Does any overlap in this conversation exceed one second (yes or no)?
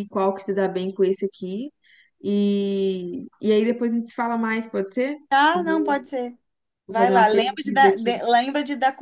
yes